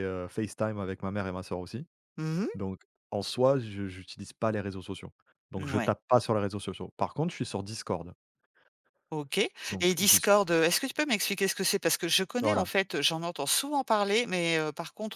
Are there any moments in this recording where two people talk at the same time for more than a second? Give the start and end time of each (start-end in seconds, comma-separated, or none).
none